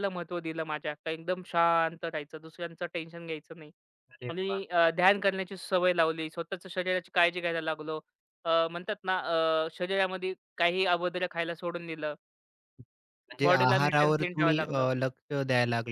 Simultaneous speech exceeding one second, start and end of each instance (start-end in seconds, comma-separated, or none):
13.5-14.9